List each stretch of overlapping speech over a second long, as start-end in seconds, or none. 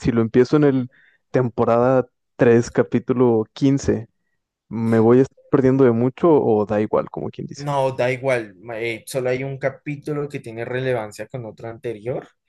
none